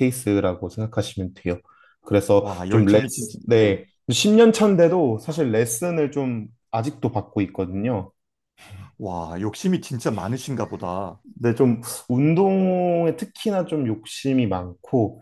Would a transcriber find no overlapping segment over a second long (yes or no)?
no